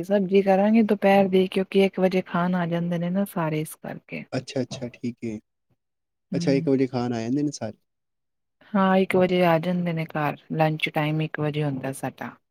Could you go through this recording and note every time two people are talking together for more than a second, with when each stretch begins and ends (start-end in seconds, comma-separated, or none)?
none